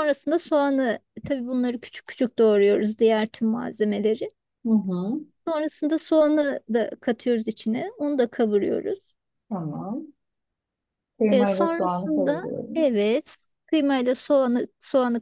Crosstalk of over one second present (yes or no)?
yes